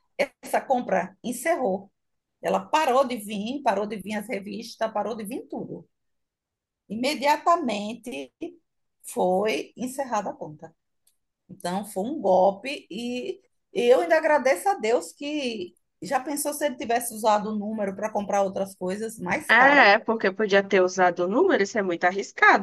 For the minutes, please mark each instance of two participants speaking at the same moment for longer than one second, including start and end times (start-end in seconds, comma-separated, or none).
none